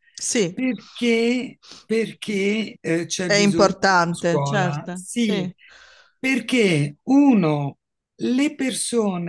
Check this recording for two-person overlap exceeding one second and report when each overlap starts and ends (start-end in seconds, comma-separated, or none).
3.2-5.5